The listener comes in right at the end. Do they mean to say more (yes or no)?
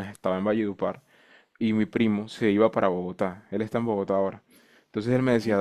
no